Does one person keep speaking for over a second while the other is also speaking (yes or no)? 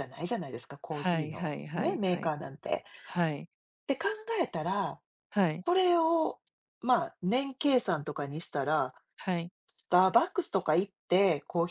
yes